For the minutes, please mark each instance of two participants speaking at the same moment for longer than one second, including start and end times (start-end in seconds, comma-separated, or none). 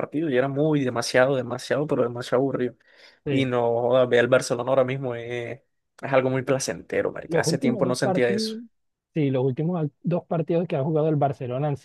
7.3-8.6